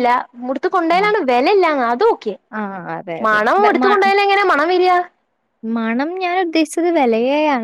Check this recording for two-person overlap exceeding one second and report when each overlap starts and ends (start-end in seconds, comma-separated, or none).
none